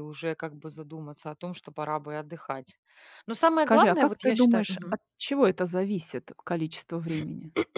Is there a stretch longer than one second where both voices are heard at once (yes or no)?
yes